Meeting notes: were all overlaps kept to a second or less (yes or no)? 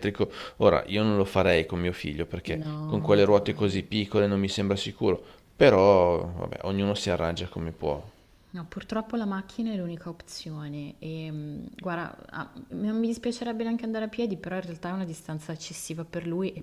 no